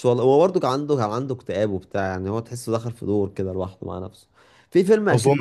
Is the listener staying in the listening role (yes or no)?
yes